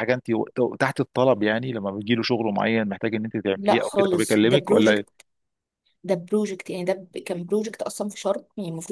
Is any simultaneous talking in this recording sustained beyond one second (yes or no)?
yes